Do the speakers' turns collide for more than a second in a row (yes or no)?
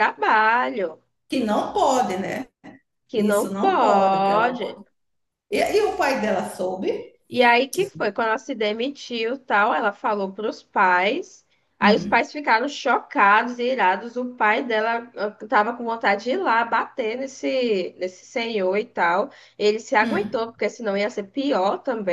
yes